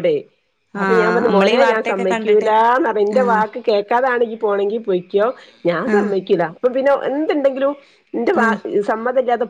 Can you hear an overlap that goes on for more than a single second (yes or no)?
yes